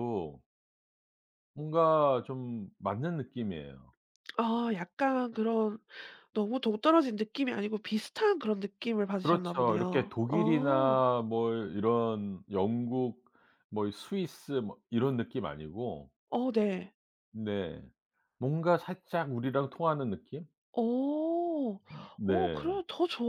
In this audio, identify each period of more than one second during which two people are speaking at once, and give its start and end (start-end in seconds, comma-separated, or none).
9.2-11.0